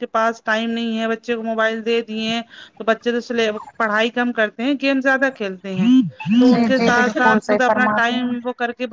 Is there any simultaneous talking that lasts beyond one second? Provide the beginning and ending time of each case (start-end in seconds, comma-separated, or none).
6.5-8.3